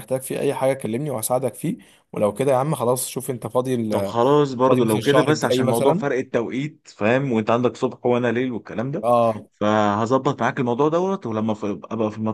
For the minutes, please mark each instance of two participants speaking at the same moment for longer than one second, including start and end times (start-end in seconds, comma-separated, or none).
4.7-6.1